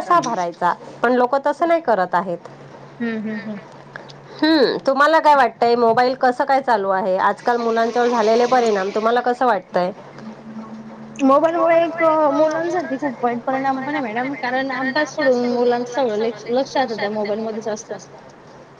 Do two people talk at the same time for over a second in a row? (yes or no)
no